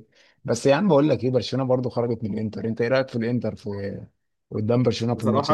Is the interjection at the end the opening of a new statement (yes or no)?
yes